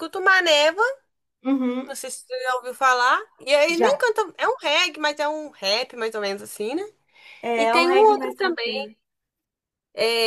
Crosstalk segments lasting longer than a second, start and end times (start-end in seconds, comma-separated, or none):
7.6-8.9